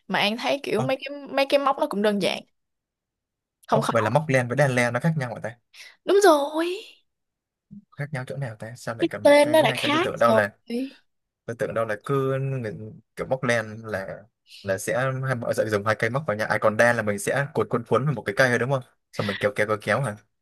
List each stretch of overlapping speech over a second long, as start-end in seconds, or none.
9.0-10.4